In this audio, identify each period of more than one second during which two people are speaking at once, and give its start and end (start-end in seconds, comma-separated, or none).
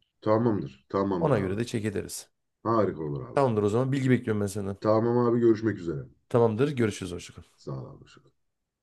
none